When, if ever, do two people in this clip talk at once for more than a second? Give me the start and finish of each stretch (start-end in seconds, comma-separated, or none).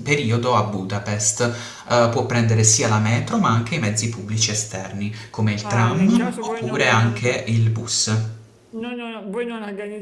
5.6-7.2